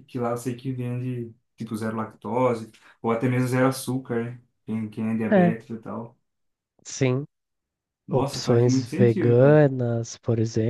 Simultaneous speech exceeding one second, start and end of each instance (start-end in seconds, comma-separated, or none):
8.1-9.6